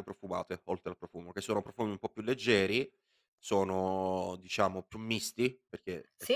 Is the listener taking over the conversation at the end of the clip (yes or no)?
no